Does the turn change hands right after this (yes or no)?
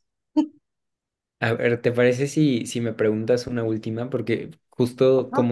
no